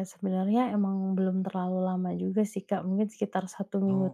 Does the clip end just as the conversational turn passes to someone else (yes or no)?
no